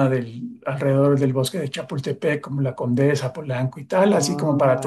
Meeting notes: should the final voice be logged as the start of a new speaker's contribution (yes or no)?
yes